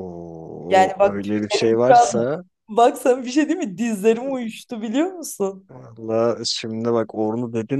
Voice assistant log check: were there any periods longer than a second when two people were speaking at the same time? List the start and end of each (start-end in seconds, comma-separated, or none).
0.7-2.3